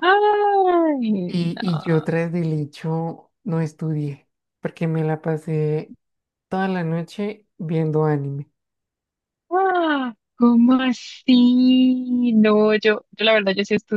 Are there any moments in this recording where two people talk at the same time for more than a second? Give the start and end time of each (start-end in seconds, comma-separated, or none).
none